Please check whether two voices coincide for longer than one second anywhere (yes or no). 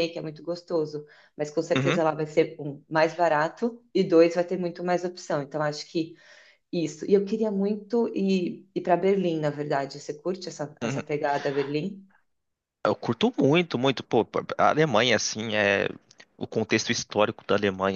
no